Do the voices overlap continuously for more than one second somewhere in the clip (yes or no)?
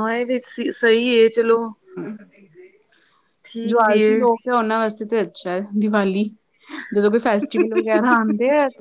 no